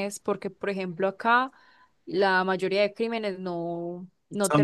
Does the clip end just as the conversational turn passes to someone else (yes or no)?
no